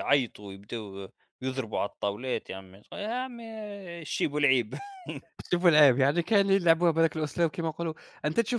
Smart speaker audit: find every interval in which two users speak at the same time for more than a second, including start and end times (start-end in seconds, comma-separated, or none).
none